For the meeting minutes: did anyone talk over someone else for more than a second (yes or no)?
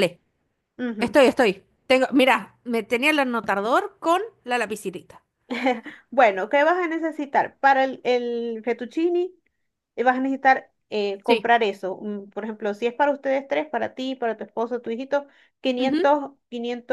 no